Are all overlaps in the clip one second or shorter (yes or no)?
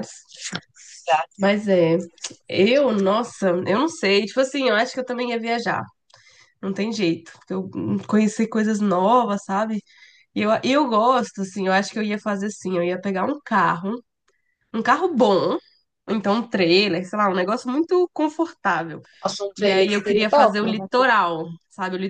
no